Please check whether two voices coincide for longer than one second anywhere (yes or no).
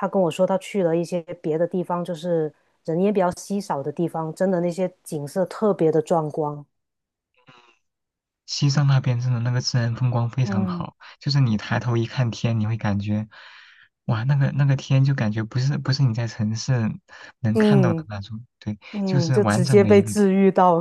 yes